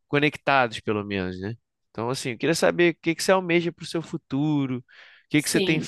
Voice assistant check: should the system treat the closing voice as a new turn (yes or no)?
no